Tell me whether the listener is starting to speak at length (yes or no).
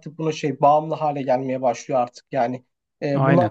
no